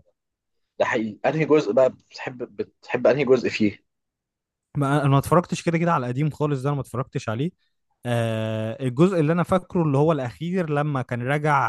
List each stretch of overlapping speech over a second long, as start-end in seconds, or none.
none